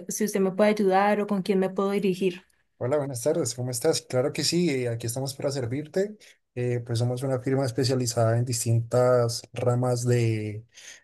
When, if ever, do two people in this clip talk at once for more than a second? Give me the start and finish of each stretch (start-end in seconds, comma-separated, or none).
none